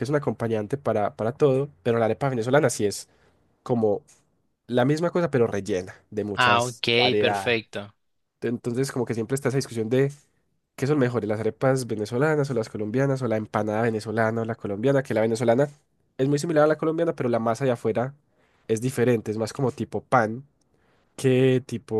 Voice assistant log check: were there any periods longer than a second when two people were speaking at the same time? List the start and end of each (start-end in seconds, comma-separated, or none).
6.3-7.6